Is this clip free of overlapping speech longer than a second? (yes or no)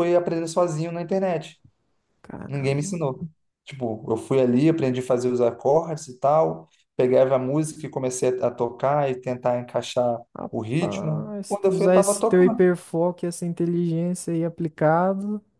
no